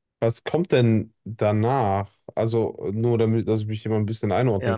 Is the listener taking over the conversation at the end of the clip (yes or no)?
yes